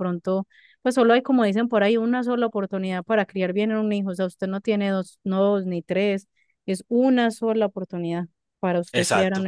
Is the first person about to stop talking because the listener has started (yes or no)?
yes